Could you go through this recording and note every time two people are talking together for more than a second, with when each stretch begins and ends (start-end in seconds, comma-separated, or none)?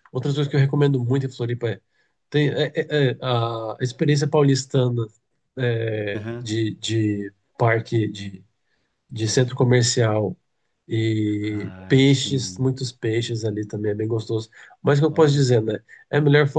11.4-12.8